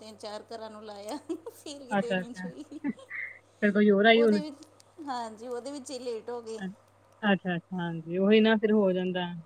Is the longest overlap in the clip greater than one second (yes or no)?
no